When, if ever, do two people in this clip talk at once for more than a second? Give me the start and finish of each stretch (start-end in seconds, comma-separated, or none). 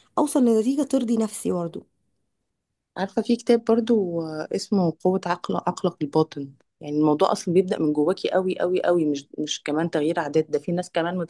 none